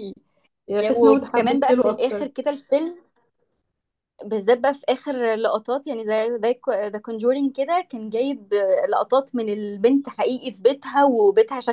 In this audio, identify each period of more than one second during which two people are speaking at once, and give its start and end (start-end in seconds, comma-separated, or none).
0.8-2.3